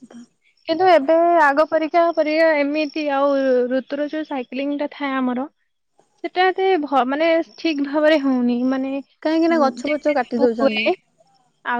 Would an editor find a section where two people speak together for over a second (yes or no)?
yes